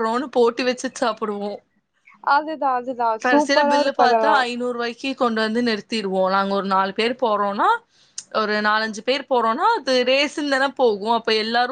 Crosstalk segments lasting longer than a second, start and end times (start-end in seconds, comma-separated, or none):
none